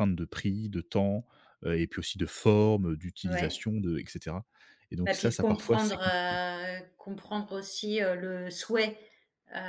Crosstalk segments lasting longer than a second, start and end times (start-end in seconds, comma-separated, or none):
5.1-6.4